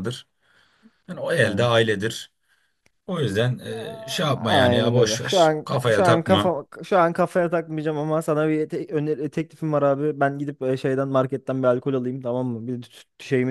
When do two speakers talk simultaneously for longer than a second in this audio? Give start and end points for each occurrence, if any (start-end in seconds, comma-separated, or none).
3.6-6.5